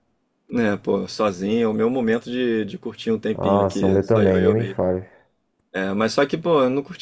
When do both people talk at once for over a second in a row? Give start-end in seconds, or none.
3.3-4.8